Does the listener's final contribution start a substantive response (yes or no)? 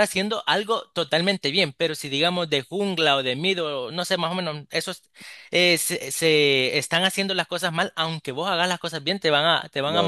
yes